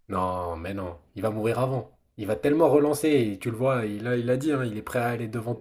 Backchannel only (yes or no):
yes